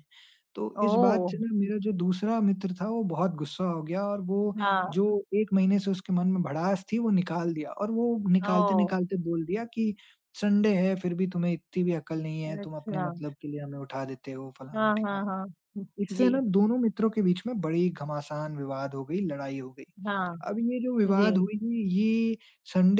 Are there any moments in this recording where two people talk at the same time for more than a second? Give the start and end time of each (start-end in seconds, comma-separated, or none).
none